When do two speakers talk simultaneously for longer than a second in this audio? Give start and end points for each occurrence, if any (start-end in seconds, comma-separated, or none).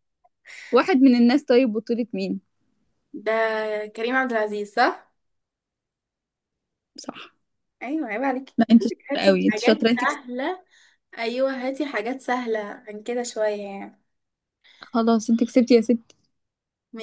8.6-10.2